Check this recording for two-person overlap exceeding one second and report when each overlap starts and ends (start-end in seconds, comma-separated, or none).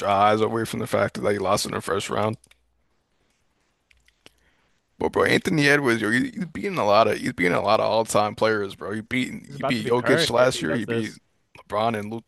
9.5-11.1